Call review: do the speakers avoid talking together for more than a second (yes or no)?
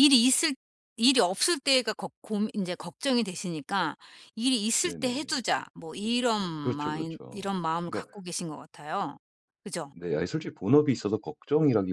no